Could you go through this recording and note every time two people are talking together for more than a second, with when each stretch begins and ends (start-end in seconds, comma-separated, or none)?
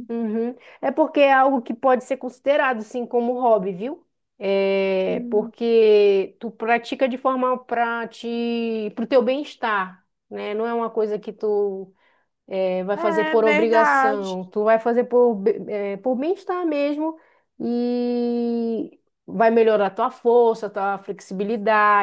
12.9-14.4